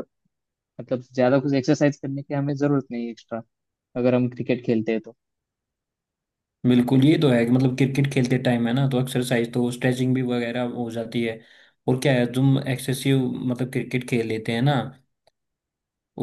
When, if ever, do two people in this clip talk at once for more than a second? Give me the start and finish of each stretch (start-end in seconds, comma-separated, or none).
none